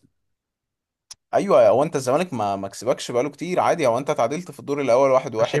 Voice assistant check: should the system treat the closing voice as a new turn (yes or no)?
yes